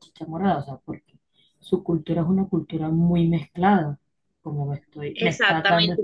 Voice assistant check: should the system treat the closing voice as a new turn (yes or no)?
yes